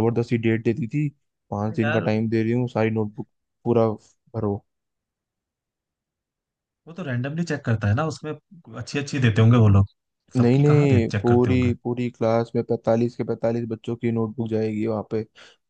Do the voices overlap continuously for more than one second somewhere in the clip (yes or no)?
yes